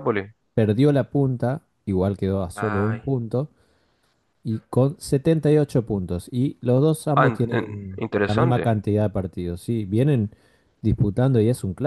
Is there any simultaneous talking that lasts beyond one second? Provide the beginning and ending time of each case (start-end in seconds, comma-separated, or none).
7.1-8.8